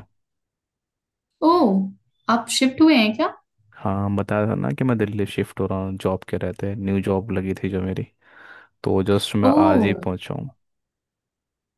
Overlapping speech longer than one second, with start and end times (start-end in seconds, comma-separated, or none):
none